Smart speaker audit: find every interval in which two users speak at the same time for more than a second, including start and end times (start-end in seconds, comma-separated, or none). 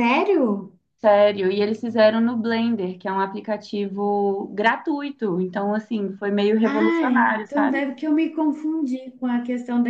6.6-7.8